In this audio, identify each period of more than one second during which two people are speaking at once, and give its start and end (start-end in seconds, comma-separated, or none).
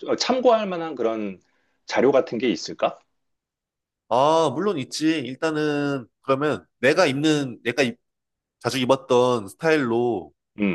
none